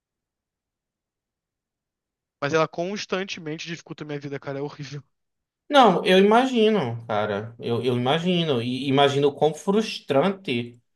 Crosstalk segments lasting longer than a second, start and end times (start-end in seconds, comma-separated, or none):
none